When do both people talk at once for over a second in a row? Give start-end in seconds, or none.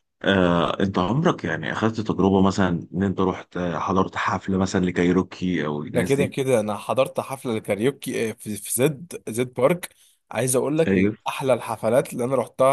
none